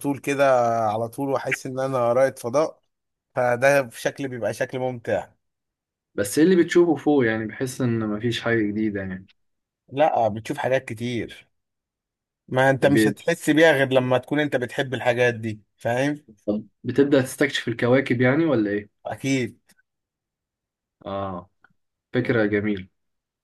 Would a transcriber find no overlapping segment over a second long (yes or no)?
yes